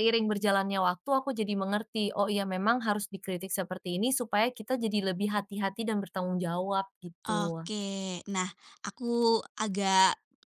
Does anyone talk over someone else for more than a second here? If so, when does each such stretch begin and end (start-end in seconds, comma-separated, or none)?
none